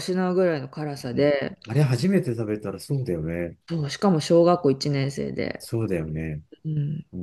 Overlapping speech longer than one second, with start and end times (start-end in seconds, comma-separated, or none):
none